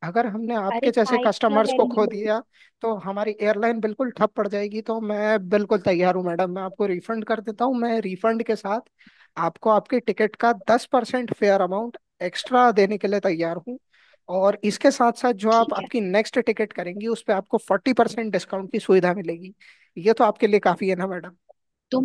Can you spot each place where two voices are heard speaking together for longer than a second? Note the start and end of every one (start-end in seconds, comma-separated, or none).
0.8-2.2